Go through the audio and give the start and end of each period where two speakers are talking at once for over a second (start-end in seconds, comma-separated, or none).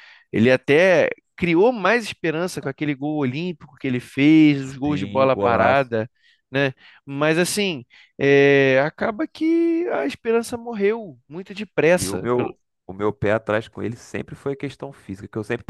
4.6-5.9